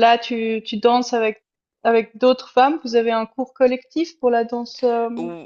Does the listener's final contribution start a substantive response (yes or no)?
yes